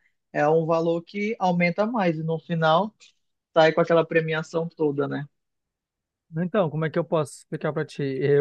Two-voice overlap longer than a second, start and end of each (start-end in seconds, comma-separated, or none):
none